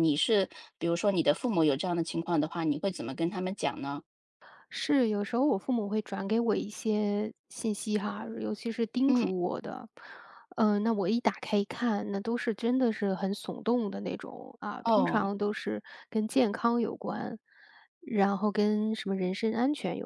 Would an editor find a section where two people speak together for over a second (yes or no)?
no